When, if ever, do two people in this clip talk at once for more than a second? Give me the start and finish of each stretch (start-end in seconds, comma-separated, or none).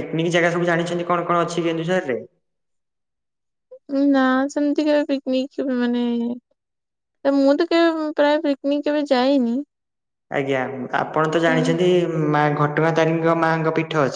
none